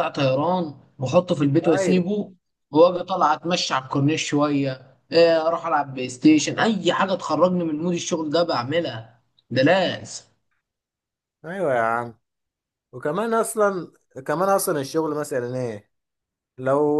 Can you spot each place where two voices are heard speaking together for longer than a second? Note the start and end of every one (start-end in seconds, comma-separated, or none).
none